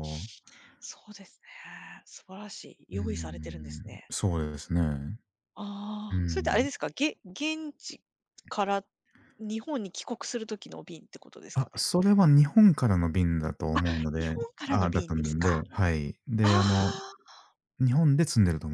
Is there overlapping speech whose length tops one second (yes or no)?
yes